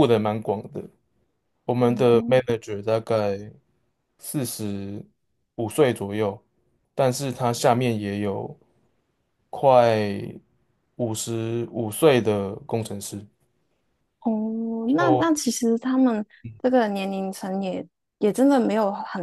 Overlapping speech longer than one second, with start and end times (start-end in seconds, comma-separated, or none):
none